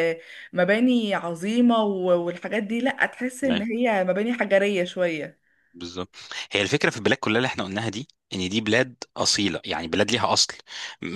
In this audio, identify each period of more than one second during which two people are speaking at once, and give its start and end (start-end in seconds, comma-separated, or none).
none